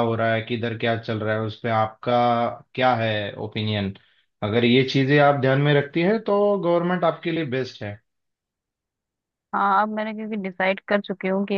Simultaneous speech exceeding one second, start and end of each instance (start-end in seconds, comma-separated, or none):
none